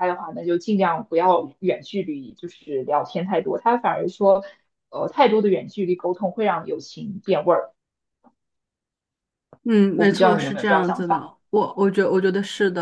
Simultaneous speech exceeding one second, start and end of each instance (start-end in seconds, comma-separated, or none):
9.9-11.3